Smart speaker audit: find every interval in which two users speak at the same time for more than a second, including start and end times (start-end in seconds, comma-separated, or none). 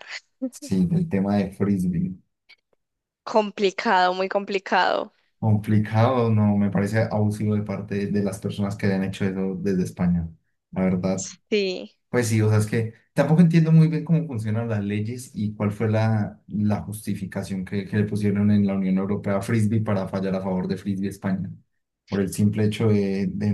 none